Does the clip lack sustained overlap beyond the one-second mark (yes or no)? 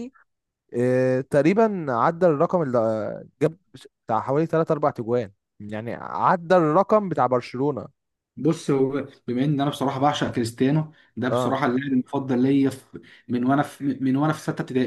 yes